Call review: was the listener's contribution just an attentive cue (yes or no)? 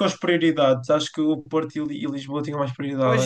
no